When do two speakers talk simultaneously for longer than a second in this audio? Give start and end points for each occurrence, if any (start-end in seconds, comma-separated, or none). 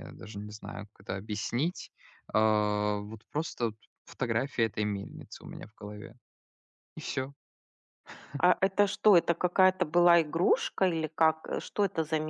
none